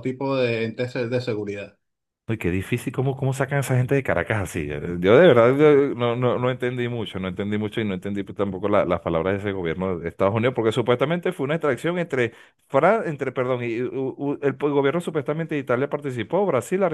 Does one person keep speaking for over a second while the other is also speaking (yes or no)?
no